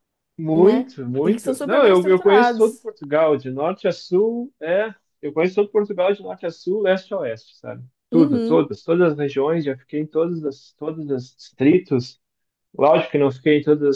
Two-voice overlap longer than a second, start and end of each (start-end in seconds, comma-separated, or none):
0.5-2.9